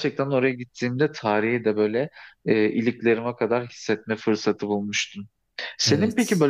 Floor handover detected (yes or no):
no